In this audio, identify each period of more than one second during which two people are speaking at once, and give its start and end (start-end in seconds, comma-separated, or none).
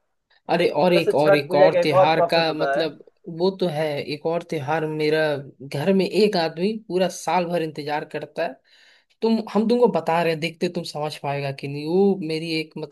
0.9-2.9